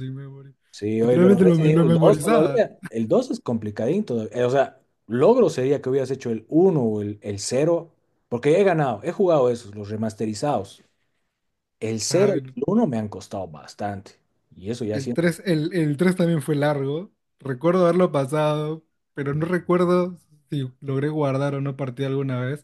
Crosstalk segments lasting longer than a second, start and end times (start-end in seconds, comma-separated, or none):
1.0-2.7